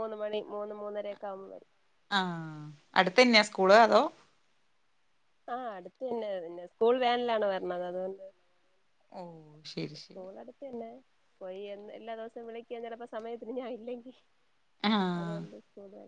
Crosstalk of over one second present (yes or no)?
no